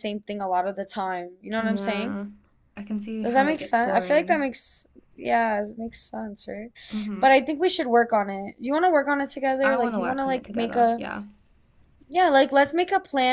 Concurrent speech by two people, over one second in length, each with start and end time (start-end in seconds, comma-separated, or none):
3.2-4.5, 9.6-11.0